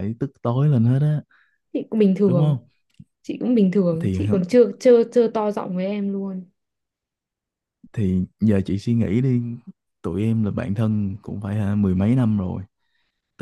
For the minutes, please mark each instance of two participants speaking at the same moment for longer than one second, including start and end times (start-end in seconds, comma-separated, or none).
none